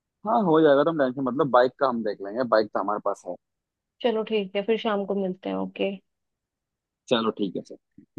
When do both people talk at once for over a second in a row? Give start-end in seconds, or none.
none